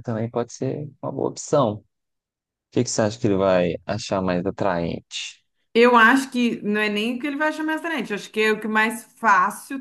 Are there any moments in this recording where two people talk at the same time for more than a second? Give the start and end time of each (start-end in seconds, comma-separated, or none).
none